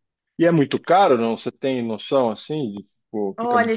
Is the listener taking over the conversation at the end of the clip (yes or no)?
yes